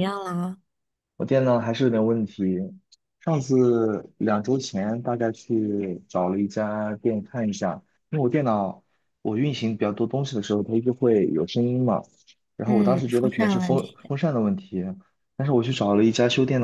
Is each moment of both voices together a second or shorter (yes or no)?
no